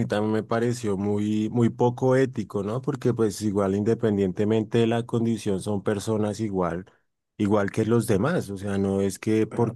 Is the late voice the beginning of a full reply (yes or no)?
no